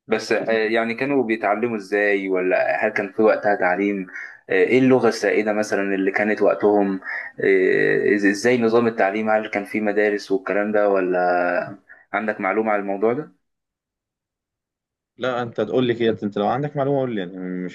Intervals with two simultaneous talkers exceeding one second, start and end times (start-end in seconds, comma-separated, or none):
none